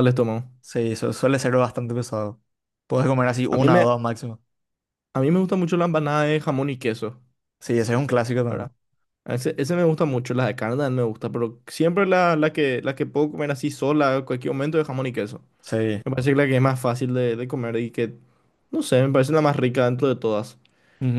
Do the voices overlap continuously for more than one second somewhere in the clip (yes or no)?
no